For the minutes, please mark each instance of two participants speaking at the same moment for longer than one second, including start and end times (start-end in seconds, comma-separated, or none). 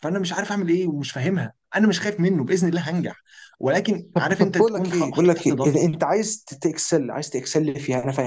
4.2-5.8